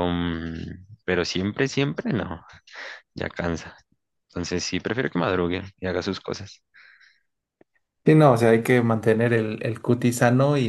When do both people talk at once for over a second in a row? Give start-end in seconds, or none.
none